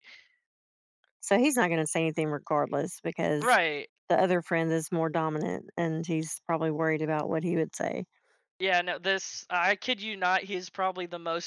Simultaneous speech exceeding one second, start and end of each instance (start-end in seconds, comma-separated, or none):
none